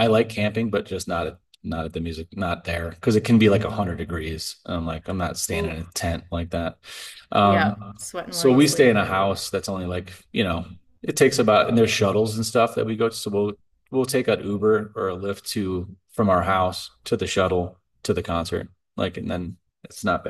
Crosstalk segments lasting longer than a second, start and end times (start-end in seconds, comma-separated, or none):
7.4-9.0